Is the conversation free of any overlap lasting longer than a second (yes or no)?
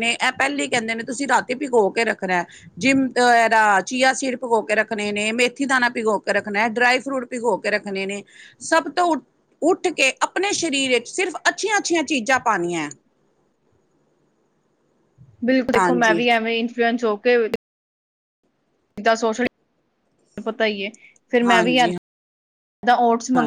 yes